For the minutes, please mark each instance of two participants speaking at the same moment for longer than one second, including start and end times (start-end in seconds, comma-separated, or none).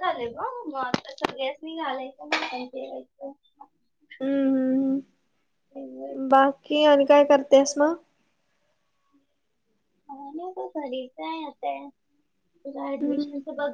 none